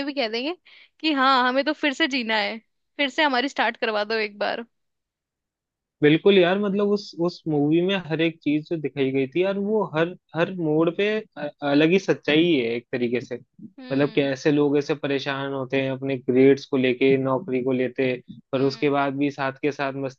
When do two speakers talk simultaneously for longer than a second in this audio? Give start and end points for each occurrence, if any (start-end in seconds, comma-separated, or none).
none